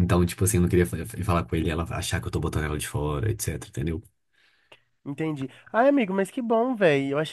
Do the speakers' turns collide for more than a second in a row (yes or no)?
no